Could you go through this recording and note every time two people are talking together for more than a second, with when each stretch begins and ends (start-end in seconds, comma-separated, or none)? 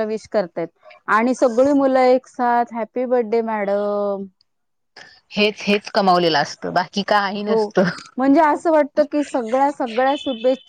none